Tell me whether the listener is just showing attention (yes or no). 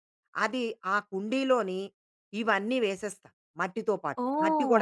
no